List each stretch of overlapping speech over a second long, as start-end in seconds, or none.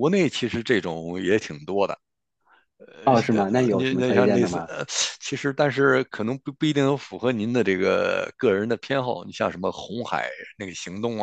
3.0-4.7